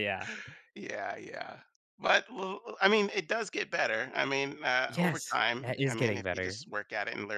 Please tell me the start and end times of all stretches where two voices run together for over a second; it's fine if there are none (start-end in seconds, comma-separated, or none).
4.9-6.6